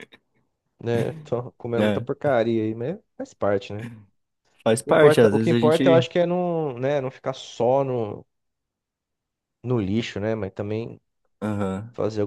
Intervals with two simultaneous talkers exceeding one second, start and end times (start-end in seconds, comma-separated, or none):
4.8-6.0